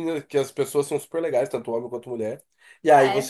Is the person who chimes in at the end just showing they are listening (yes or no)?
yes